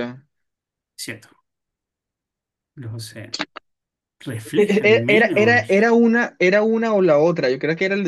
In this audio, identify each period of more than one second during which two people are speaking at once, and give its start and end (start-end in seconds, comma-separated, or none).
4.5-5.9